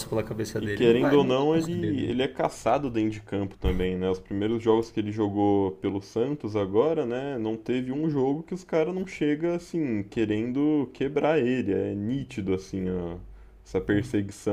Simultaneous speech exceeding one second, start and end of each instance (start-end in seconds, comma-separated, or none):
0.6-2.1